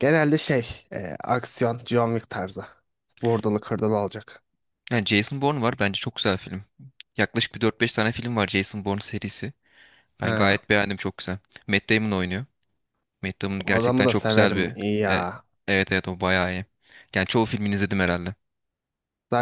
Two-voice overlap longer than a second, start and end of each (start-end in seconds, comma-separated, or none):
13.6-15.2